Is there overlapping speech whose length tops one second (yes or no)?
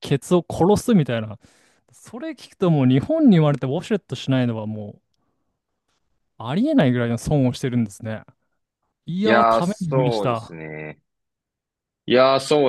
yes